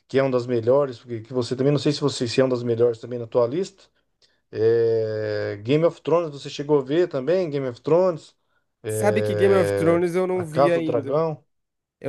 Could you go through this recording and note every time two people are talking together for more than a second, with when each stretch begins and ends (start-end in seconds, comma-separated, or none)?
8.9-11.2